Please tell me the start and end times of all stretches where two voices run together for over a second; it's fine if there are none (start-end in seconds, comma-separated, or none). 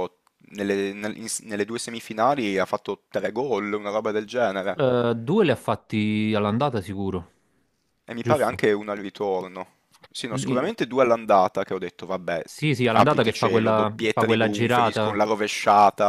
12.9-15.2